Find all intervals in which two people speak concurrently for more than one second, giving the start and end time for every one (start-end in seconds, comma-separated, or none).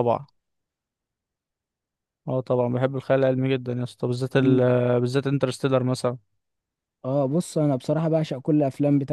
none